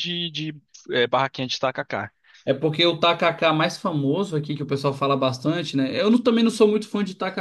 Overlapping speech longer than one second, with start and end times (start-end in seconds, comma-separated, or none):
none